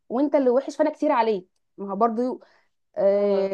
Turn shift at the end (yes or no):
no